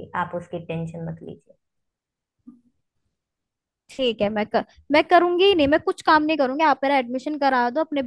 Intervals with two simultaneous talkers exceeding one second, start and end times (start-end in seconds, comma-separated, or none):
none